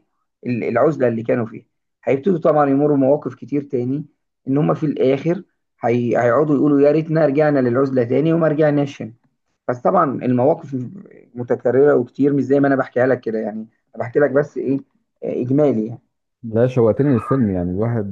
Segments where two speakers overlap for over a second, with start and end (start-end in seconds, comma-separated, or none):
none